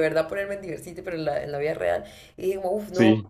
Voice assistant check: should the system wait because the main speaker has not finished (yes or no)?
yes